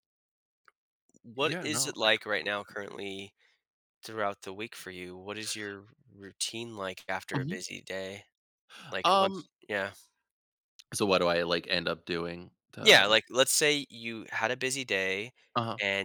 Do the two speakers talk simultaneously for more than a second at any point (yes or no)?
yes